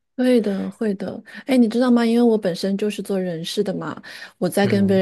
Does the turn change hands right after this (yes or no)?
no